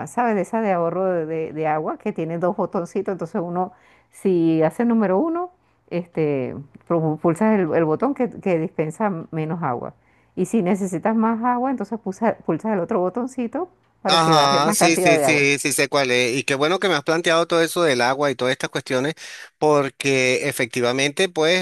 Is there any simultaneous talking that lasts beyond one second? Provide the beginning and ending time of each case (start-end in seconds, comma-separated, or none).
14.1-15.4